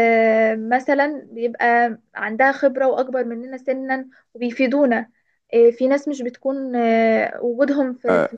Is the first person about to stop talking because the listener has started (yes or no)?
yes